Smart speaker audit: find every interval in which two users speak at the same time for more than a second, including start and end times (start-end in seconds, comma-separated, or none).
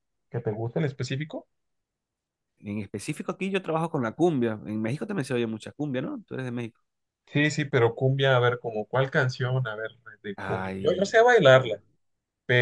10.3-11.8